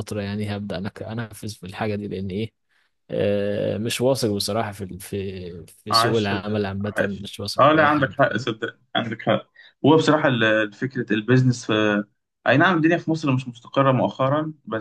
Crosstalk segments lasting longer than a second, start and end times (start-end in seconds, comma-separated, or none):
5.9-8.5